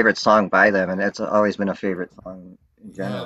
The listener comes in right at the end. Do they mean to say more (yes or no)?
yes